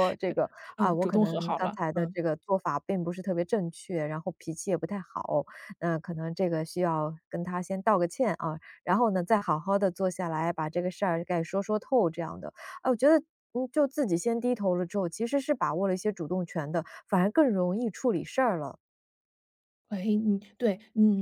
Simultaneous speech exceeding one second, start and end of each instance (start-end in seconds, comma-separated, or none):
0.8-2.2